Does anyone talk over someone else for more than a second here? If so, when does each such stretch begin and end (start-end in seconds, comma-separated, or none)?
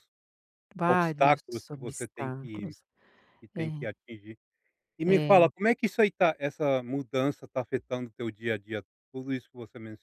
0.8-2.8